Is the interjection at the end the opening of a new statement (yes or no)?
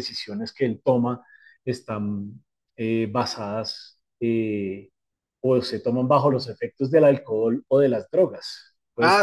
yes